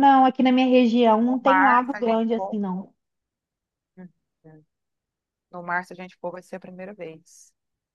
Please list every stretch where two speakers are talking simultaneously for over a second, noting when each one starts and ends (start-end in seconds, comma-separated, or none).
1.3-2.6